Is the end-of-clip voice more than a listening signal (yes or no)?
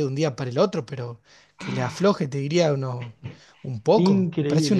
yes